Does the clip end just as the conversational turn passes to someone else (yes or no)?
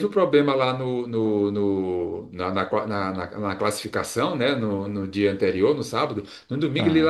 no